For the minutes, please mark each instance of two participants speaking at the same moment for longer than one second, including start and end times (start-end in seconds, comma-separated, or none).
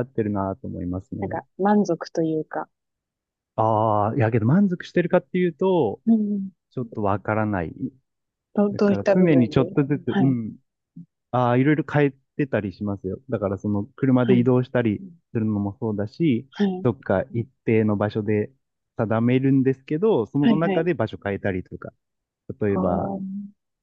8.7-10.4